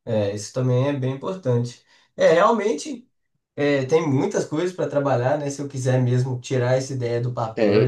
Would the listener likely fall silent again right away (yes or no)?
yes